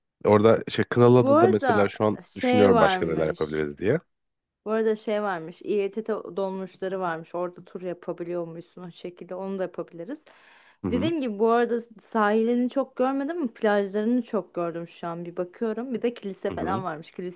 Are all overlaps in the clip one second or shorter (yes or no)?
no